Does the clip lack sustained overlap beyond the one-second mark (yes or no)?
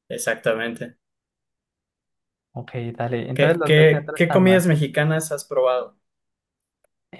no